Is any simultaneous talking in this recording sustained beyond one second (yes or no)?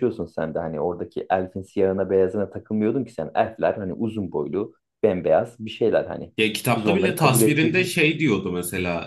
yes